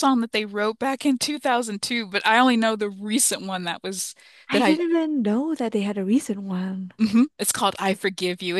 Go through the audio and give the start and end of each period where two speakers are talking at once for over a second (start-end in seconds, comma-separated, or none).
none